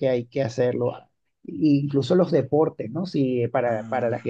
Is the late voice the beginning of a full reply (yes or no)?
no